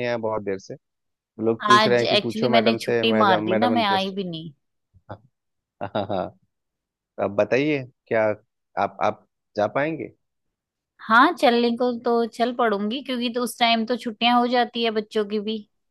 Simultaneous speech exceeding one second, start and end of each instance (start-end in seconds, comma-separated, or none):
1.7-4.3